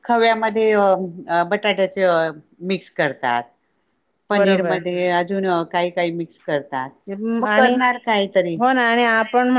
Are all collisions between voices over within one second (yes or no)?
yes